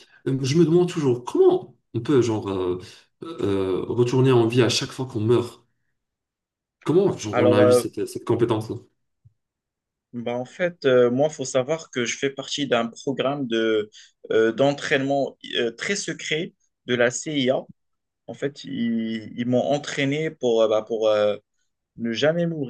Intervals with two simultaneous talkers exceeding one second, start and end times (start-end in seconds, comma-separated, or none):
none